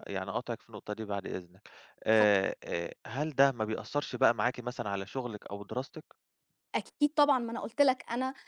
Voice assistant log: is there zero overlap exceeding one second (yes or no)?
yes